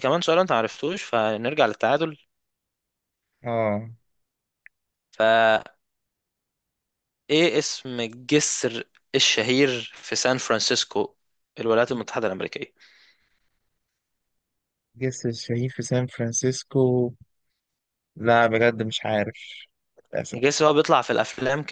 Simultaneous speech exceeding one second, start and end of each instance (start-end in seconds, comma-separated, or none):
none